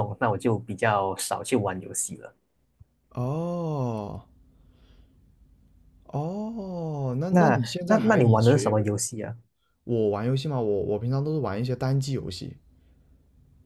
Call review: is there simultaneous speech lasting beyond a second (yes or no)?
yes